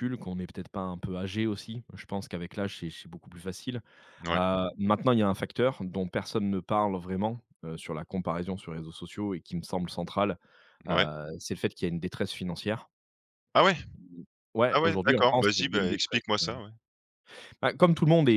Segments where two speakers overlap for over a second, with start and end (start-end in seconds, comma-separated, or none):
14.7-16.2